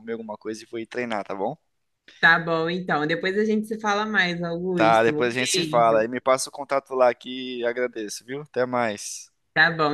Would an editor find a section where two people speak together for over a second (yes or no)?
yes